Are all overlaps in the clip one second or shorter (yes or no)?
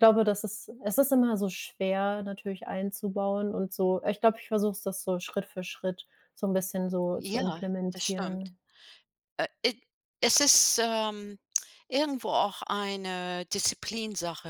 no